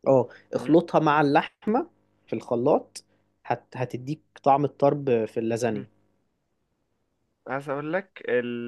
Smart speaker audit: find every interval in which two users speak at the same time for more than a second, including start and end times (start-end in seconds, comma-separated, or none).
none